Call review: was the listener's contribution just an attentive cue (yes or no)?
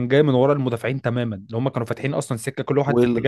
no